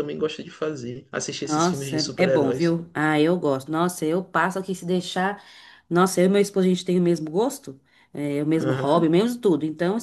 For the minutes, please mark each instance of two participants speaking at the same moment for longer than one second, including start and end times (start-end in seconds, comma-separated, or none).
1.4-2.8